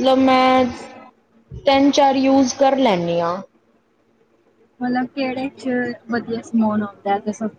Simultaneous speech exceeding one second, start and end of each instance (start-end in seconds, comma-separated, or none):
none